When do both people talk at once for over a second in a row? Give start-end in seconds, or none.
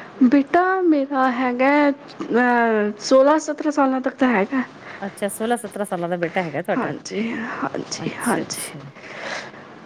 none